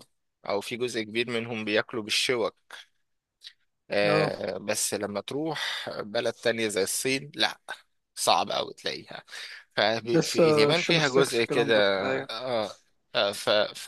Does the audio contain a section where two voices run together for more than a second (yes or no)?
yes